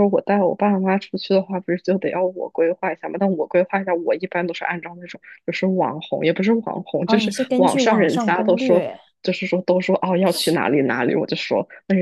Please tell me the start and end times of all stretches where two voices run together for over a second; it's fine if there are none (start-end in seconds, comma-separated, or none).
7.0-8.9